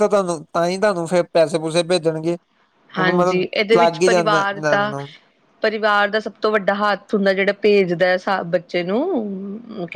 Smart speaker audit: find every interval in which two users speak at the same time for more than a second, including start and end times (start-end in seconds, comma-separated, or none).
3.0-4.9